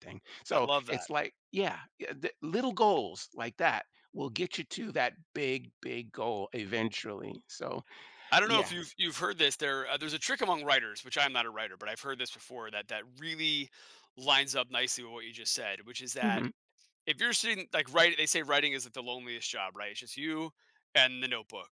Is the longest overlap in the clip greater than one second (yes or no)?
no